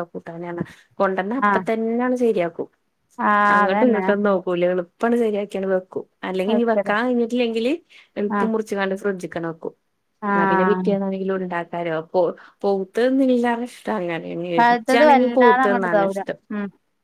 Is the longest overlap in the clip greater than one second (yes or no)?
yes